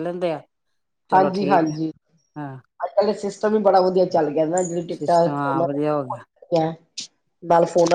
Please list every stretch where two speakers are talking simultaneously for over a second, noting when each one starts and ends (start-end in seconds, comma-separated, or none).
5.0-6.2